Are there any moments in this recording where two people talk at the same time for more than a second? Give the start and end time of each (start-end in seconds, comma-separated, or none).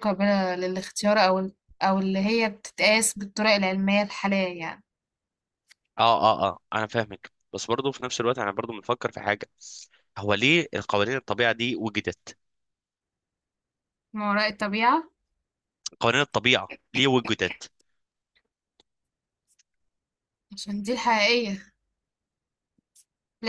none